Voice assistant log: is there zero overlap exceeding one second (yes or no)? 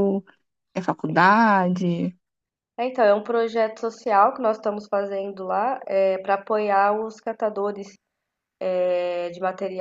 yes